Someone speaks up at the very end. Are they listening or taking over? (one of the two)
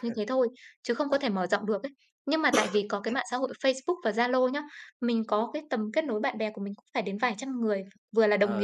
listening